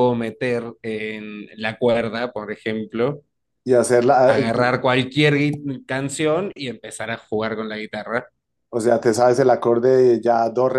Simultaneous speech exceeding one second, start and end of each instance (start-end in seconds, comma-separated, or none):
none